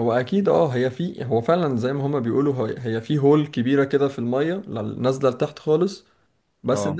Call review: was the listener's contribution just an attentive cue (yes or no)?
yes